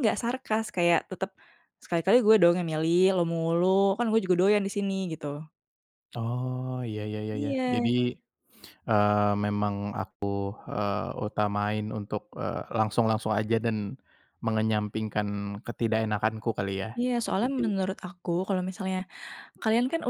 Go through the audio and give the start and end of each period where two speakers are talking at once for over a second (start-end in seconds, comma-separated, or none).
none